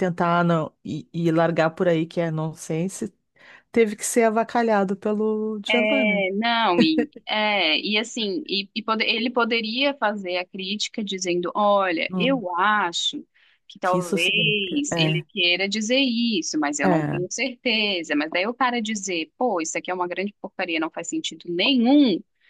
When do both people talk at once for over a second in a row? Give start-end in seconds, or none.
13.8-15.2